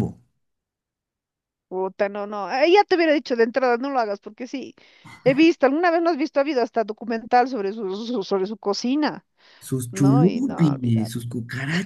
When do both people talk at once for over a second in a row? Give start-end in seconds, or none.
9.9-11.1